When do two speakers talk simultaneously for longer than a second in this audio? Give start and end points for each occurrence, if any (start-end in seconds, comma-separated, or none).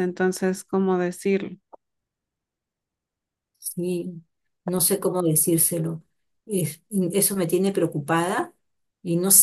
none